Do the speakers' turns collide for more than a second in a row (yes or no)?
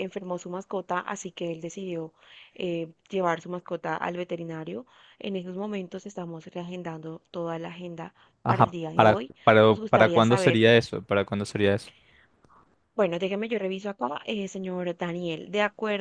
yes